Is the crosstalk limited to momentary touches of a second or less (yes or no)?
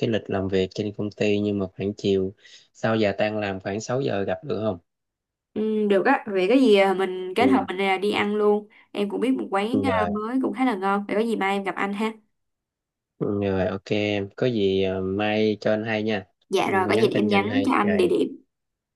no